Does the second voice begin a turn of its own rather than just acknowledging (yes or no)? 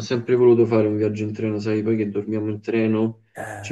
no